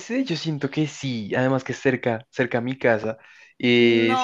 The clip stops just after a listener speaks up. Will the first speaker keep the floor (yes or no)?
yes